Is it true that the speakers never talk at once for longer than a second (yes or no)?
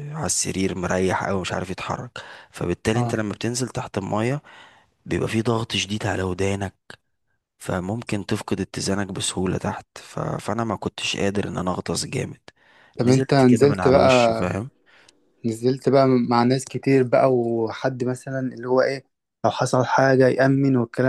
no